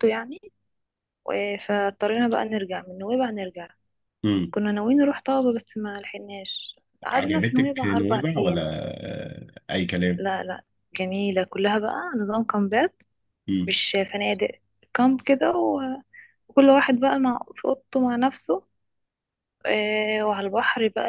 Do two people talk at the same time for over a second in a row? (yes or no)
yes